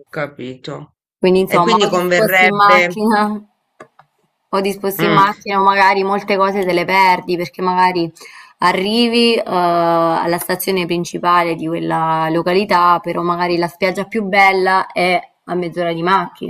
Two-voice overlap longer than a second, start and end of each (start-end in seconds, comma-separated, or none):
1.4-3.0